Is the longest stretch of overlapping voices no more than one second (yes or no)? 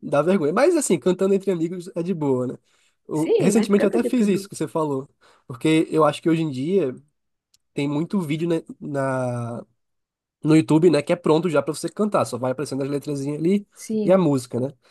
no